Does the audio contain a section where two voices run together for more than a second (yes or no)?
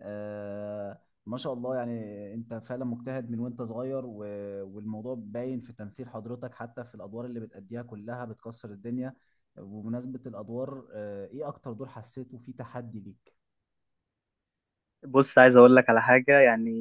no